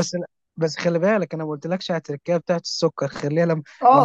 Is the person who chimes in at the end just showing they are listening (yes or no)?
no